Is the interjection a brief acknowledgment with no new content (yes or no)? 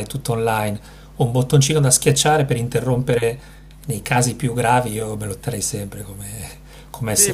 no